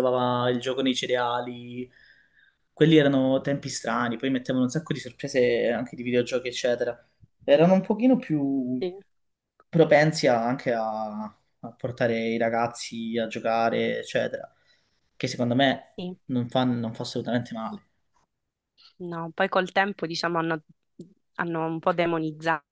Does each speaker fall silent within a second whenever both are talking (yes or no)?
yes